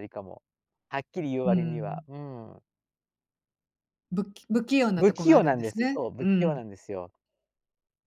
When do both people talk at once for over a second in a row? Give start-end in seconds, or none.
5.0-6.6